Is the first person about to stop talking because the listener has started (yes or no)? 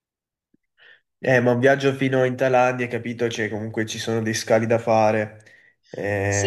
yes